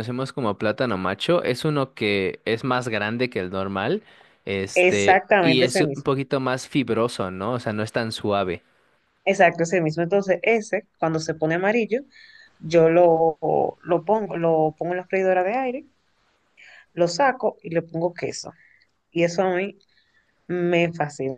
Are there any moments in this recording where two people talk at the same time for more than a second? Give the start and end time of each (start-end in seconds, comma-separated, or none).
4.7-6.1